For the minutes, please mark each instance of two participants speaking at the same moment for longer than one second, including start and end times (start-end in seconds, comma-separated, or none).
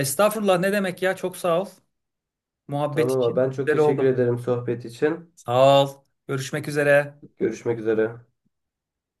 2.9-4.2